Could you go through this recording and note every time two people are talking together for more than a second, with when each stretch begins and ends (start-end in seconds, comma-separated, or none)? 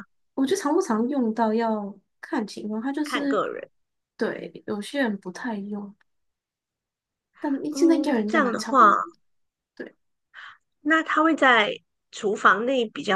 7.7-8.9